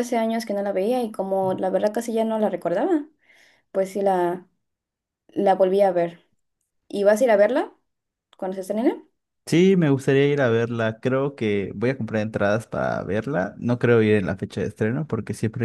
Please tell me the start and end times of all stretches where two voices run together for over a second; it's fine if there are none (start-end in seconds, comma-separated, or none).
none